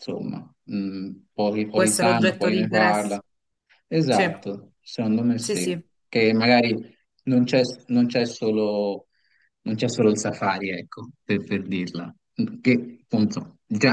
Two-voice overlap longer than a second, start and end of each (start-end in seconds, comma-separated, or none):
1.7-3.2